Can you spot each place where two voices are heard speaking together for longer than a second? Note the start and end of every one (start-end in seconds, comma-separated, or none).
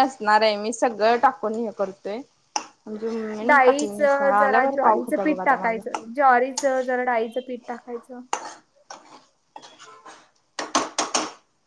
3.5-6.0